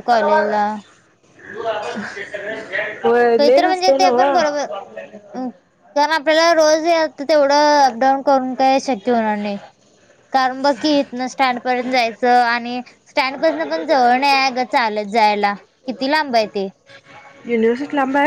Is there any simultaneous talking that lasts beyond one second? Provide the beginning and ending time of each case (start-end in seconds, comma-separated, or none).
3.4-4.6